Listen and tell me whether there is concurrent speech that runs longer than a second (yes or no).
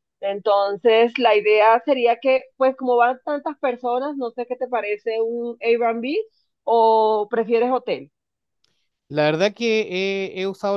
no